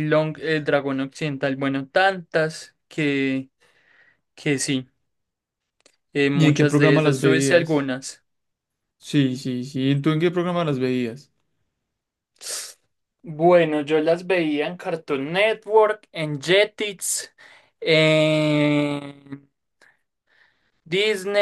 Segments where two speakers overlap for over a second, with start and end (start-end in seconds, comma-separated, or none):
6.3-7.9